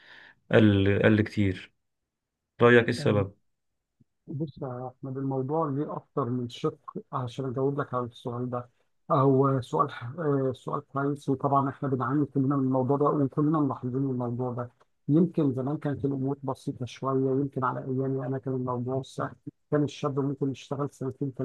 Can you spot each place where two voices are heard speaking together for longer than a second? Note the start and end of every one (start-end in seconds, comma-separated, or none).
none